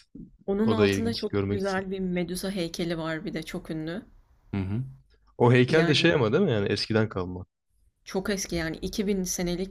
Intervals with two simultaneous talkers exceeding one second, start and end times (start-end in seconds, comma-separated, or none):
0.6-1.9